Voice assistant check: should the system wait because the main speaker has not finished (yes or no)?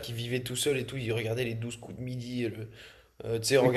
yes